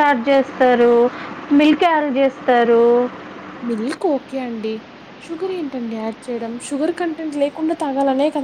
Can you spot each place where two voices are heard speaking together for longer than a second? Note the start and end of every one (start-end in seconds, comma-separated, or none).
none